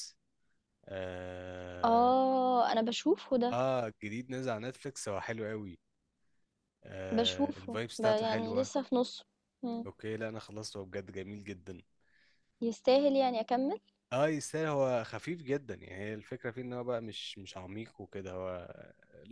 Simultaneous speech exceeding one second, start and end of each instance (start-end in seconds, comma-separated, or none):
7.1-8.7